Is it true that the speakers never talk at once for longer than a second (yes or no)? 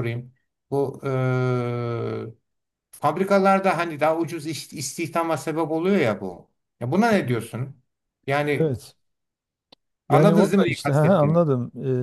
no